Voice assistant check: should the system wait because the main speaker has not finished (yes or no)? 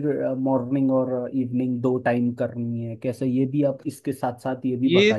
no